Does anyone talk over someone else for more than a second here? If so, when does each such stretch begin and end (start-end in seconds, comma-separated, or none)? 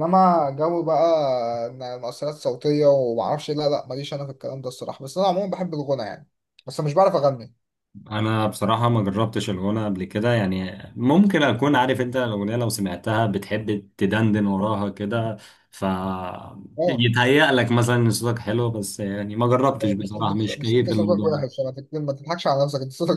19.8-21.4